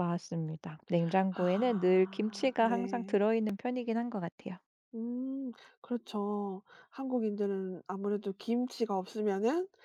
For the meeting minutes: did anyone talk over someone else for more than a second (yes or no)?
yes